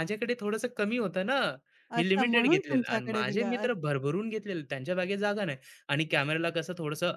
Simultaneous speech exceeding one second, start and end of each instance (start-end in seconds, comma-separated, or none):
2.0-3.7